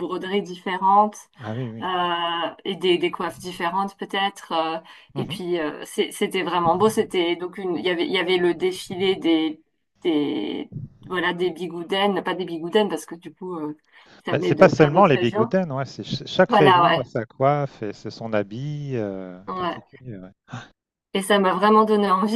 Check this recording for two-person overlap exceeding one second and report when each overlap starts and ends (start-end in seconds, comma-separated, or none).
14.3-15.5